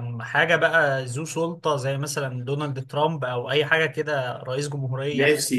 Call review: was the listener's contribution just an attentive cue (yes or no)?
no